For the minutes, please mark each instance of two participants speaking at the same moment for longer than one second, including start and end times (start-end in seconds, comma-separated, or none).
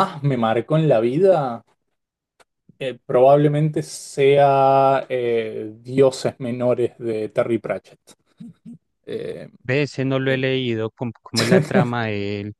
none